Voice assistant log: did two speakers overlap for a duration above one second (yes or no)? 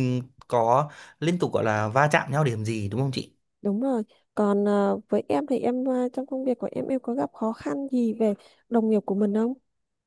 no